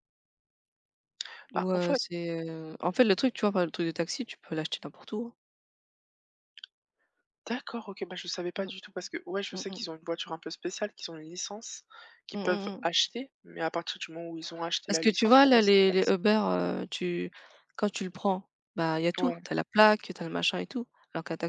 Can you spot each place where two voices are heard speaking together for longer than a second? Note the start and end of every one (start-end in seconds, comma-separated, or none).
14.9-16.1